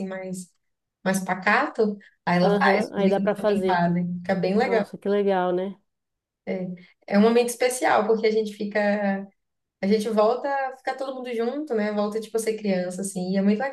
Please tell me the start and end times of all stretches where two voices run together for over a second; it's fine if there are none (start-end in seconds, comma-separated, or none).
2.4-3.8